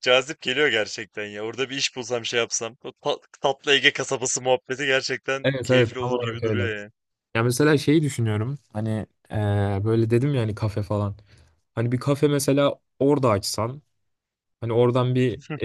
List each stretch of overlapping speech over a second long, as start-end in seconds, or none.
5.4-6.7